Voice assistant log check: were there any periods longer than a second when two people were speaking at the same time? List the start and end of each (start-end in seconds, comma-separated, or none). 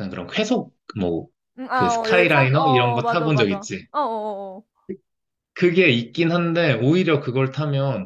1.7-3.9